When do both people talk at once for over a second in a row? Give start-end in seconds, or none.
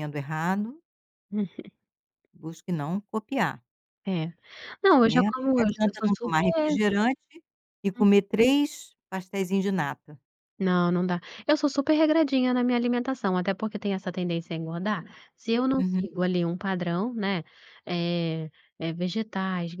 5.0-6.8